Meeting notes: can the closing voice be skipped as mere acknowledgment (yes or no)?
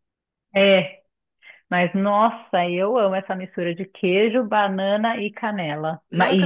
no